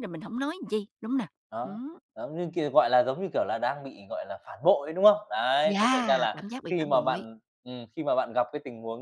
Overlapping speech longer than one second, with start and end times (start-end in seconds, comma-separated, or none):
5.6-7.3